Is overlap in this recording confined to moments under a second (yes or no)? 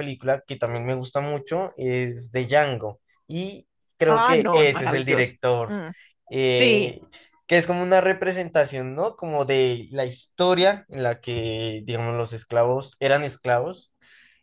no